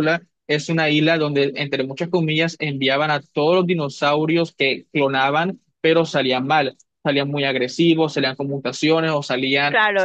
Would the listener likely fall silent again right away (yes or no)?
no